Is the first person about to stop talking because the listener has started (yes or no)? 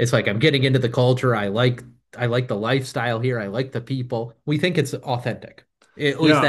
yes